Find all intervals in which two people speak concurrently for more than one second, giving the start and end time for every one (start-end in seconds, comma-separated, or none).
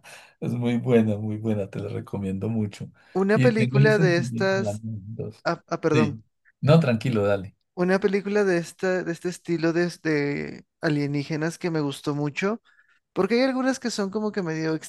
3.3-4.8